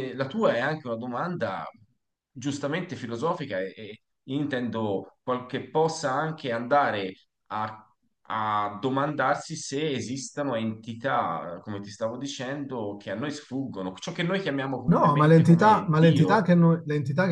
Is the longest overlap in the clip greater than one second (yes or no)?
yes